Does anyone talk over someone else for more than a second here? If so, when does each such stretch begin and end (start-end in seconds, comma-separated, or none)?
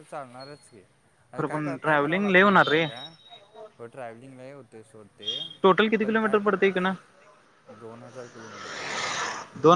1.4-2.9